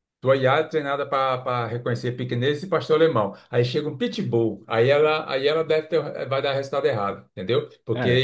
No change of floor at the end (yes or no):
yes